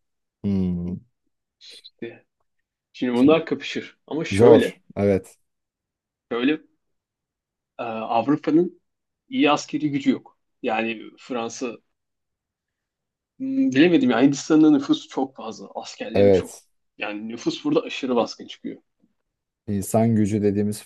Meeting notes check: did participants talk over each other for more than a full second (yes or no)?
no